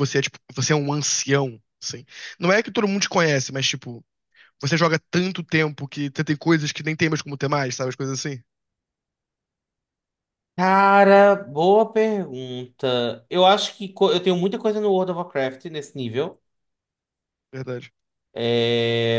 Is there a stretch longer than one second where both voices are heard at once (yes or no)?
no